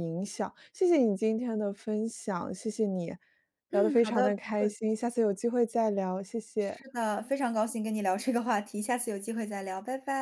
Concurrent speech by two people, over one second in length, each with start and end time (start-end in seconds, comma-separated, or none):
3.7-5.0